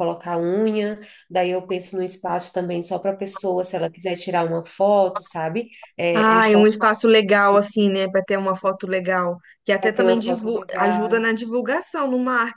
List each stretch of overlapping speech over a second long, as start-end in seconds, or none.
9.8-11.3